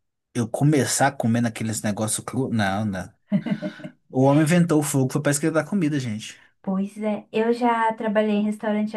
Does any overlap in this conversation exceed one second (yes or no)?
no